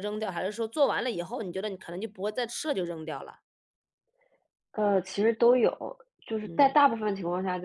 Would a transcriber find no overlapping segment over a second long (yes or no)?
yes